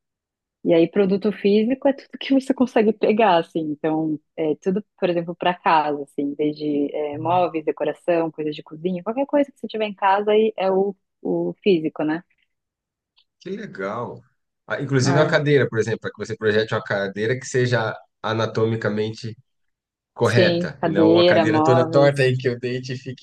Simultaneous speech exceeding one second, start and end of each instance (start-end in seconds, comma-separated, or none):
20.2-22.3